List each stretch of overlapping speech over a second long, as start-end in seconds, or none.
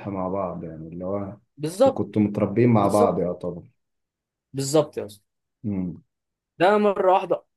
none